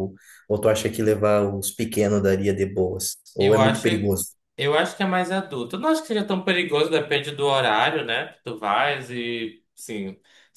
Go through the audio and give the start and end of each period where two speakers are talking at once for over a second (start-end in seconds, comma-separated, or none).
none